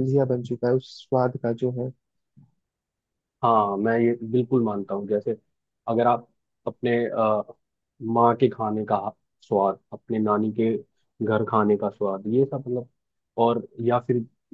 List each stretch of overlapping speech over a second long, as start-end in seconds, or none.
none